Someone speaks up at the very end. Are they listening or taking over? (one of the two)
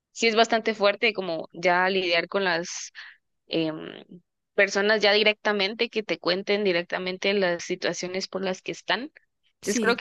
listening